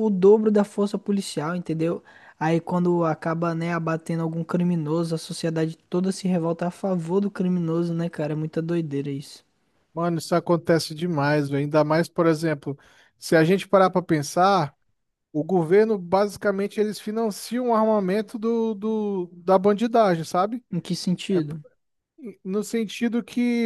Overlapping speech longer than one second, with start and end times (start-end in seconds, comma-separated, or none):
none